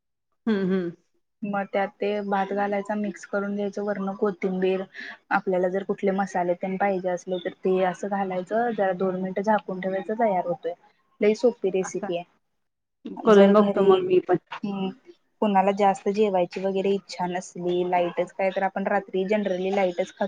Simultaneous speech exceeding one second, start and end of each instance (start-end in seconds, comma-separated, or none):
none